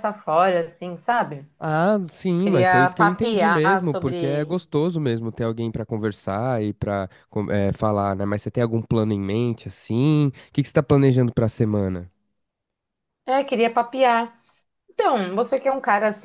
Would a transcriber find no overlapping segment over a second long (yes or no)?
no